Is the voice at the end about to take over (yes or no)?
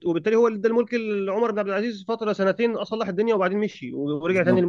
no